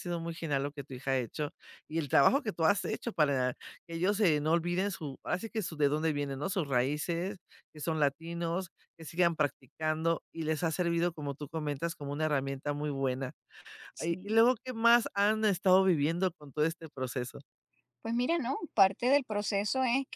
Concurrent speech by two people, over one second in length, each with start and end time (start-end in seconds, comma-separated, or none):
none